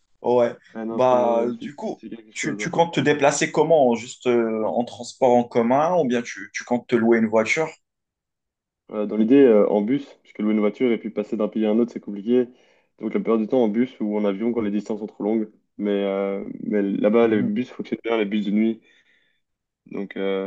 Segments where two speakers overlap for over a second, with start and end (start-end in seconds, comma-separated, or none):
0.9-2.7